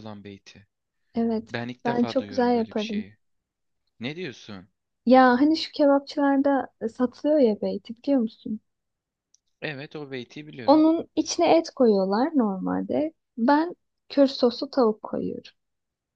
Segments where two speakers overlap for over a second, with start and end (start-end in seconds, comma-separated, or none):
1.5-3.0